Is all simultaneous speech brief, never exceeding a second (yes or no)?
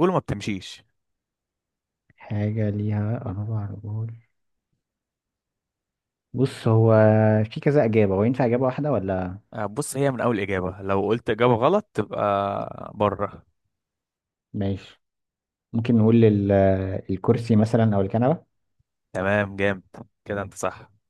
yes